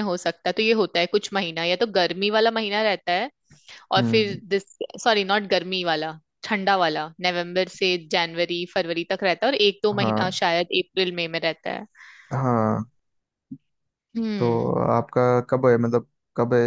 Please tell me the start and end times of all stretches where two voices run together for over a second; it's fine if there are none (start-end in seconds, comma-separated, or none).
none